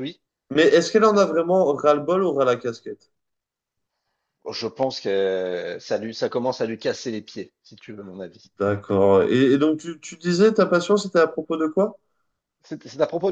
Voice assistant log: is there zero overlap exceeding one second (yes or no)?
yes